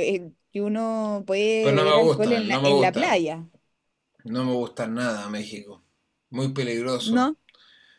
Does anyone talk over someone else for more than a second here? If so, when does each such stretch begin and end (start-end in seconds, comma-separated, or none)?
1.6-3.1